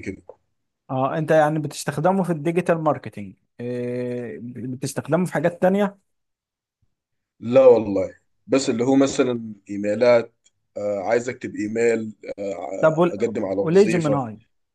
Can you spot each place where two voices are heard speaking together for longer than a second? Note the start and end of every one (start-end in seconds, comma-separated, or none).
12.8-14.2